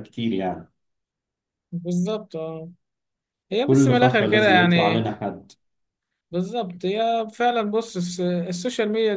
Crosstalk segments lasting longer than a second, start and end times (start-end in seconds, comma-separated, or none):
3.6-5.1